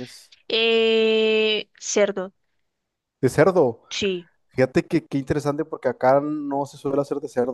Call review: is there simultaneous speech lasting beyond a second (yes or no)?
no